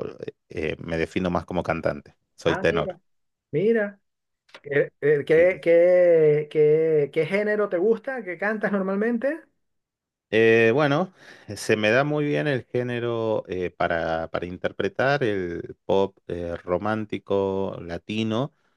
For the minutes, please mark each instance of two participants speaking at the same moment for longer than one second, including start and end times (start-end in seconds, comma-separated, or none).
none